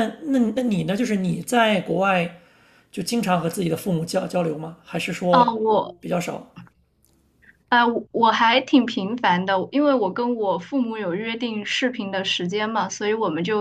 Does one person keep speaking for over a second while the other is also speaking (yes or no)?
no